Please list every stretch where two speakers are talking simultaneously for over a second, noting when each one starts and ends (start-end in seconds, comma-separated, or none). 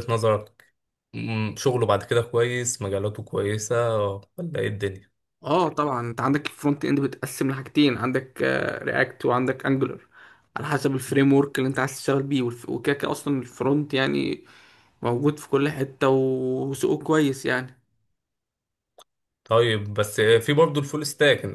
none